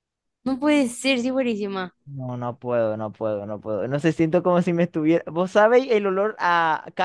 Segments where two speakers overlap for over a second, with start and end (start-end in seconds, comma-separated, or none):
none